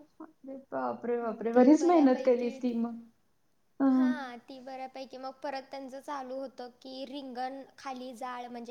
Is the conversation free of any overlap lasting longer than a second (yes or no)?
yes